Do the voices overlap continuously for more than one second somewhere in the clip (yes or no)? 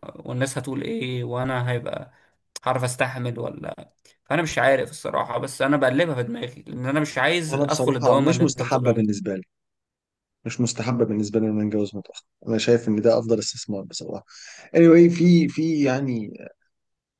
yes